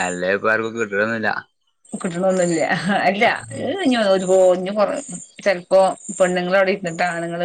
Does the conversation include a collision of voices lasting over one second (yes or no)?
no